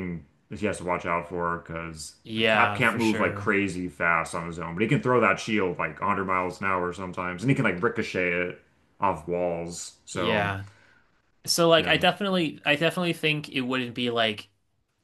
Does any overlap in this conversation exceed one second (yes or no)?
yes